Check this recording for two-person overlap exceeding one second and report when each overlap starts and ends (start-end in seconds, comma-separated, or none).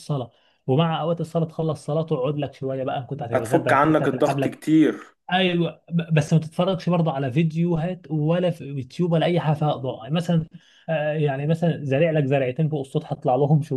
3.3-4.6